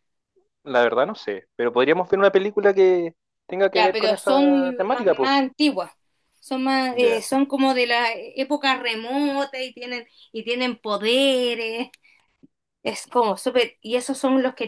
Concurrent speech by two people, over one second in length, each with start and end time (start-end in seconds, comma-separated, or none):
3.7-5.3